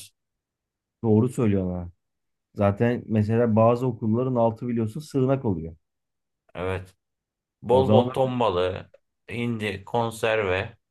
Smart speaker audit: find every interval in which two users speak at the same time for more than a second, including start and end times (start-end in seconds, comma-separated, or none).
none